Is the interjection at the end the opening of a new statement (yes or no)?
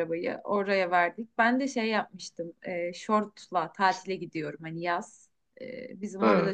no